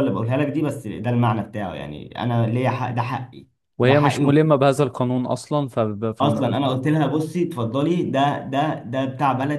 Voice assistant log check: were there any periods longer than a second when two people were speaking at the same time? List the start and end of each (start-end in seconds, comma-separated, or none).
none